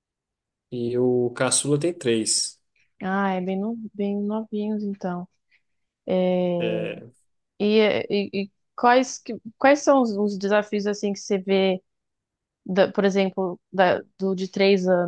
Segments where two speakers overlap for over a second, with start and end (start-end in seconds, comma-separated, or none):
none